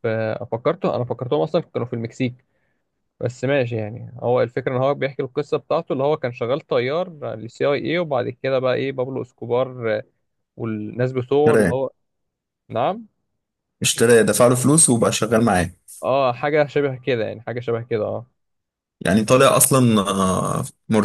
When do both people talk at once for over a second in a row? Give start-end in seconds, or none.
none